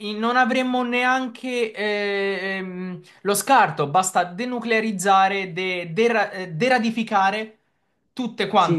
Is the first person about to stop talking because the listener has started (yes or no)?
yes